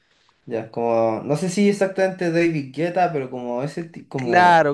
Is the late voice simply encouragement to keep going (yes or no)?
no